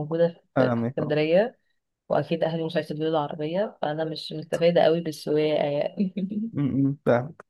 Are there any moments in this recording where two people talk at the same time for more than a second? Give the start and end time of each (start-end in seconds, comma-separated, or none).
none